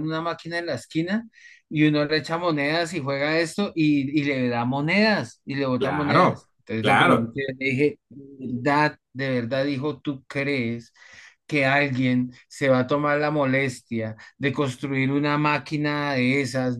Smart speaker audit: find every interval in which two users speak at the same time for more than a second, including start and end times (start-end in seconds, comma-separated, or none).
5.8-7.4